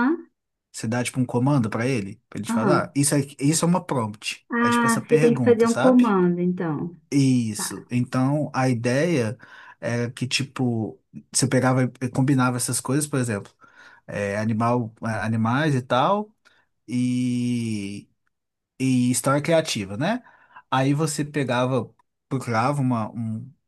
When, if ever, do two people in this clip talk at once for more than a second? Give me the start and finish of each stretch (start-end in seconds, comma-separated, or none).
4.5-6.1